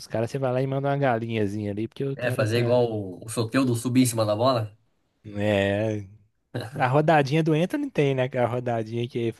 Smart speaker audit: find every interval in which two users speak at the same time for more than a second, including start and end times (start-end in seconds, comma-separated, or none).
none